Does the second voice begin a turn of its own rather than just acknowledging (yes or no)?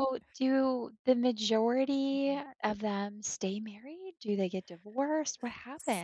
yes